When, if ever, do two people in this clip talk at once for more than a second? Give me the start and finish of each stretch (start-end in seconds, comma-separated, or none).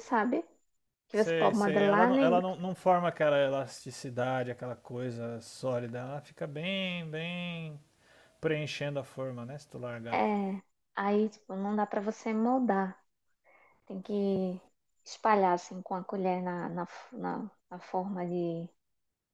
1.1-2.4